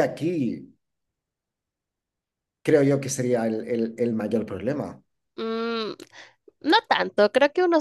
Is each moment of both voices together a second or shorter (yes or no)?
yes